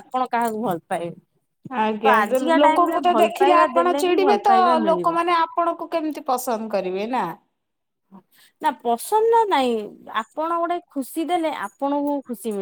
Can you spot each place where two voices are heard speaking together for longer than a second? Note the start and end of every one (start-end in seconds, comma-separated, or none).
2.0-5.1